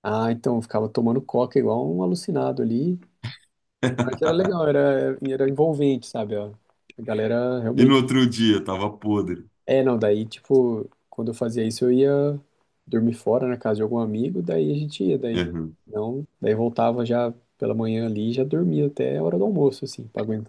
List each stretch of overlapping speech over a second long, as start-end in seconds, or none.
none